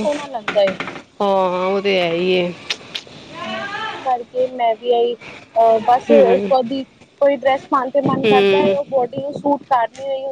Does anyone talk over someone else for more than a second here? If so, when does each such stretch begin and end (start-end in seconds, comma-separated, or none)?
none